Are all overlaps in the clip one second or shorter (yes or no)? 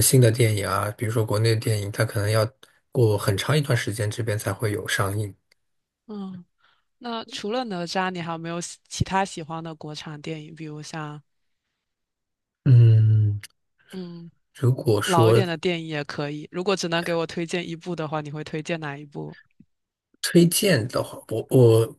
yes